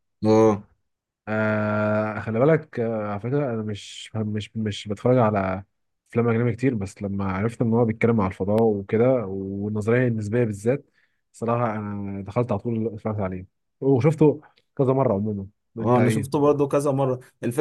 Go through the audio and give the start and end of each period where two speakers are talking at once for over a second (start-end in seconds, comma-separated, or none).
none